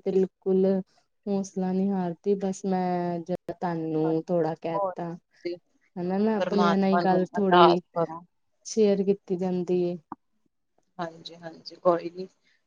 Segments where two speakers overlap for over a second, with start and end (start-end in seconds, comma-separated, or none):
6.4-7.8